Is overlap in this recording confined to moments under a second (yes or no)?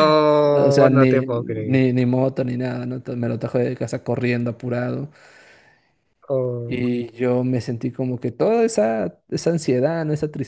no